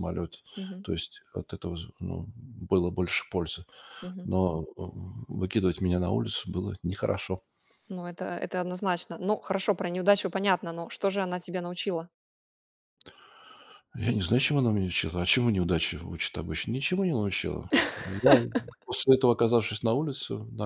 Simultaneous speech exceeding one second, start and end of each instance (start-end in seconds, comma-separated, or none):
none